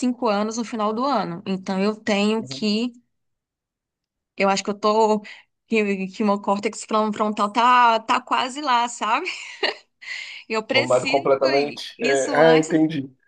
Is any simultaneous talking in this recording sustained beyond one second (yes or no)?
yes